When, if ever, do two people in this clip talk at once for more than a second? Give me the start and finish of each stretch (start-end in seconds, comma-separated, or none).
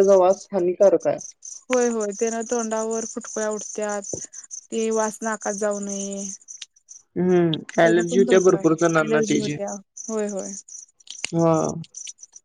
7.8-9.5